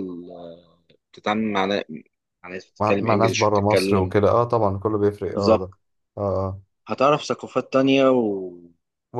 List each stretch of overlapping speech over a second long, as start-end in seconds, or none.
2.8-4.1